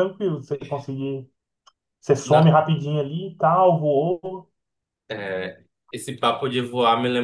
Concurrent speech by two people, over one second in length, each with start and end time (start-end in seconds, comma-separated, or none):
none